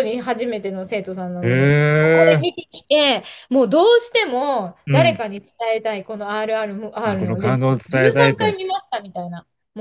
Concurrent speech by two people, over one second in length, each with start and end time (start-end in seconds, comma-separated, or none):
7.0-8.6